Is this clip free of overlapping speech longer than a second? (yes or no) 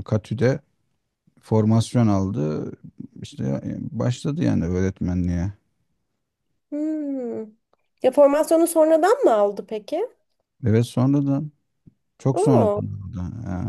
yes